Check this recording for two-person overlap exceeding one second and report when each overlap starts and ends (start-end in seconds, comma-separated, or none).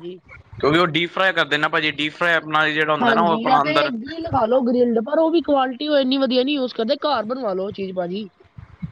none